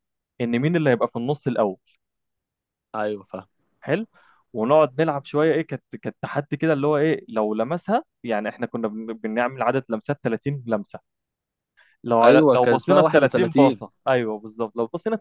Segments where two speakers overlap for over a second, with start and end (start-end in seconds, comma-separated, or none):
12.2-13.8